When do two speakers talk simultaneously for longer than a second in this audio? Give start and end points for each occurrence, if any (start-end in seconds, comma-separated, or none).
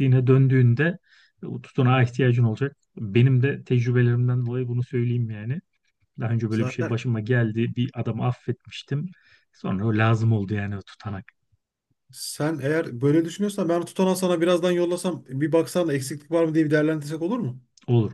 none